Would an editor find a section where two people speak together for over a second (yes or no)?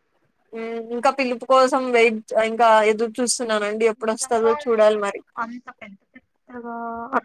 no